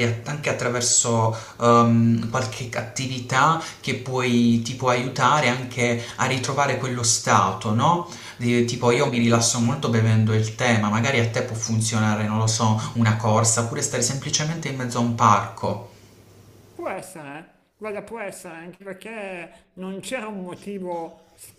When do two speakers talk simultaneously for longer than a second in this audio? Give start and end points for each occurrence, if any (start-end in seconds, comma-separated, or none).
none